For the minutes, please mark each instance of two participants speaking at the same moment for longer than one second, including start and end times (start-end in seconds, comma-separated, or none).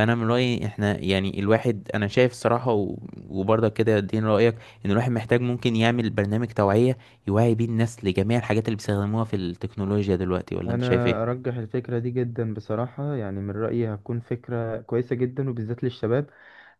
none